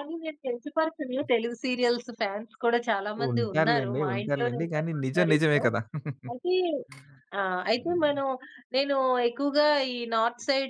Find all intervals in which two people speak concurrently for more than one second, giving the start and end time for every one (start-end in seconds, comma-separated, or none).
3.3-5.6